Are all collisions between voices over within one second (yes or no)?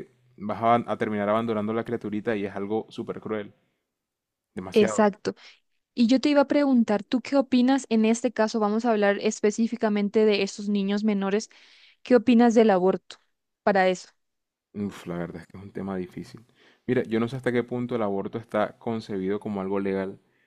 yes